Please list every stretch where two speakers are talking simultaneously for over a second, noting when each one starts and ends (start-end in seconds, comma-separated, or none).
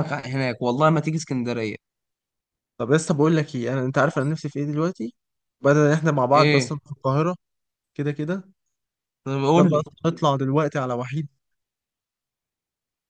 none